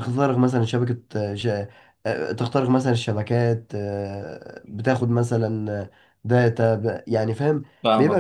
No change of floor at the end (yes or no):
no